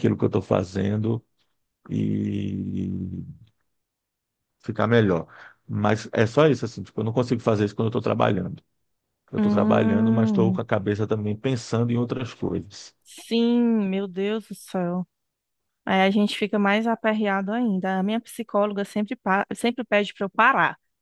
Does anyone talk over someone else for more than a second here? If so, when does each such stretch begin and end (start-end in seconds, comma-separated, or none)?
9.4-10.6